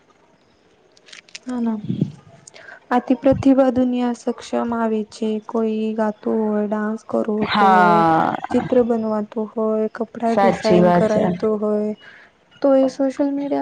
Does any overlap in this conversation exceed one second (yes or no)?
yes